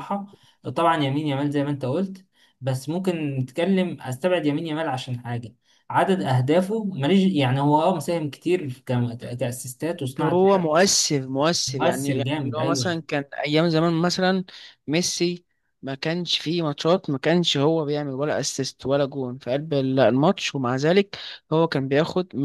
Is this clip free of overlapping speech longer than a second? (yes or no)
no